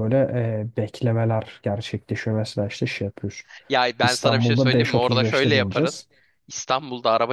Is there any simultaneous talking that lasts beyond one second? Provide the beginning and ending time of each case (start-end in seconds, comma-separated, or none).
4.0-6.0